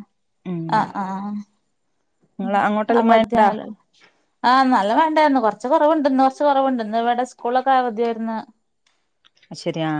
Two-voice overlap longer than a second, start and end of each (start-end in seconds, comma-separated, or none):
none